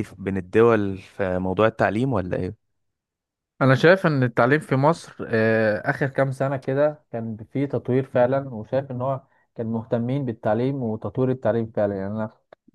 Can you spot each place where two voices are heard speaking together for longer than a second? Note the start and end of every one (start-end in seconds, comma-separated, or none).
none